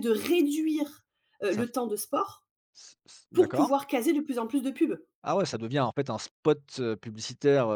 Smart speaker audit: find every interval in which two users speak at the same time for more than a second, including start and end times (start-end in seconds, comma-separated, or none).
none